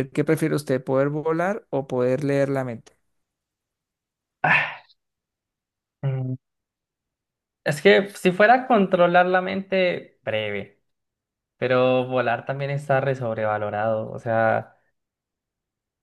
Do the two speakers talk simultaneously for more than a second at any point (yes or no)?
no